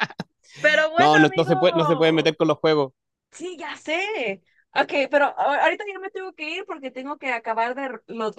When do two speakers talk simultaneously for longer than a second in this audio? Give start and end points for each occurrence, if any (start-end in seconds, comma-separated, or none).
1.0-2.4